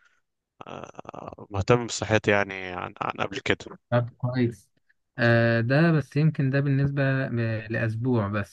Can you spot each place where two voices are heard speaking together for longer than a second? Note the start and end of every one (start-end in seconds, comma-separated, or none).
none